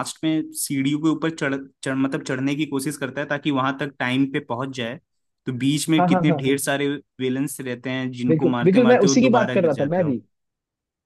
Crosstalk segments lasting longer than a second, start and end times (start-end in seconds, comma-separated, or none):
8.3-10.1